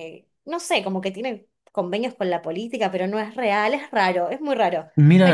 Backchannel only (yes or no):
no